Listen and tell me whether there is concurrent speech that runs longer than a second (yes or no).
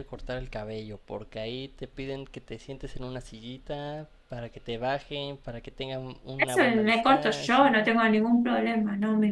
yes